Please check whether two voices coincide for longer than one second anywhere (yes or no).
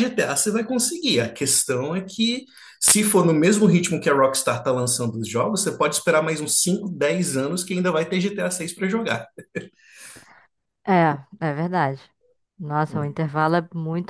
no